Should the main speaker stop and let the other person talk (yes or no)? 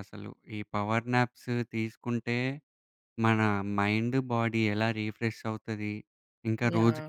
no